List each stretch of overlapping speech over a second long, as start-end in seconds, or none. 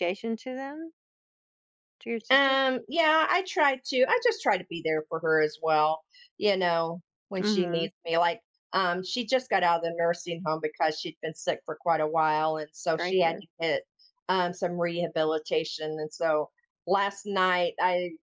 none